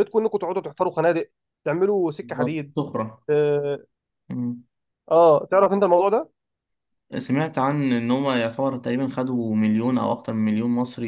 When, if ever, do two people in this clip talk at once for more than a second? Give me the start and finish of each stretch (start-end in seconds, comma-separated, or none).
none